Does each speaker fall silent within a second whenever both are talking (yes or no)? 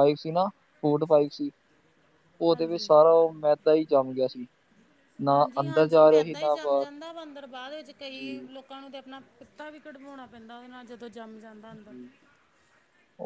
no